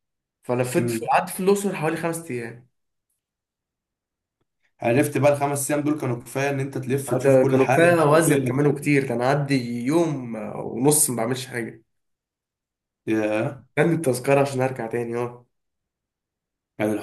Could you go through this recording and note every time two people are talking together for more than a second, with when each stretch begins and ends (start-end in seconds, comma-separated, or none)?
7.1-8.3